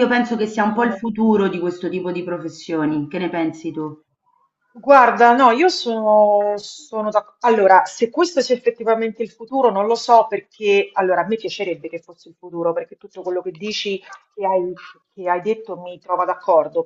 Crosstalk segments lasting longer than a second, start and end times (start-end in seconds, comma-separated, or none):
none